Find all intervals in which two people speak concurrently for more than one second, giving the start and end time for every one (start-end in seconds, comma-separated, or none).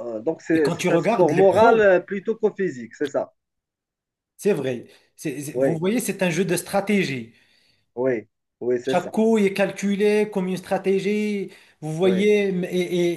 0.5-1.9